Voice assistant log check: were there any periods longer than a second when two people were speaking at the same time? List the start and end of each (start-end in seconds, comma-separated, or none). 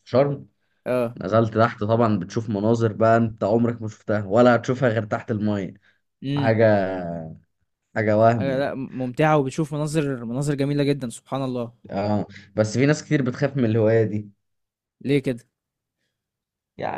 none